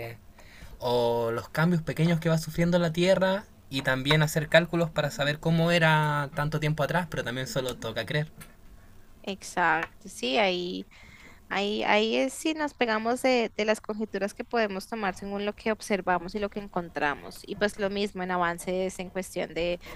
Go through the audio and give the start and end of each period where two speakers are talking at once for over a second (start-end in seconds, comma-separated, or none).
none